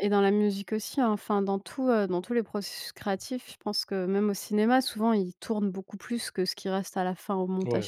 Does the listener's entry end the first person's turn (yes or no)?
yes